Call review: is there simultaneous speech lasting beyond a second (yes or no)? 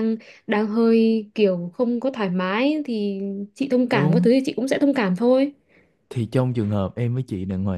no